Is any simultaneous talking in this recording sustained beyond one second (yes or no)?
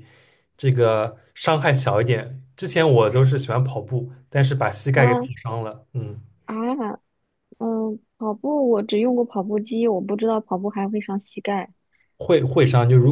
no